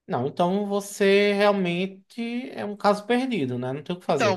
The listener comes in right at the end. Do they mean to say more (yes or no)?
yes